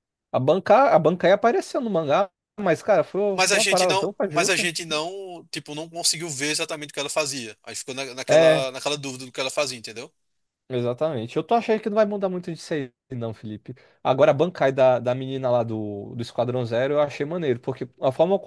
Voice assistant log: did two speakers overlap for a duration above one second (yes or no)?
yes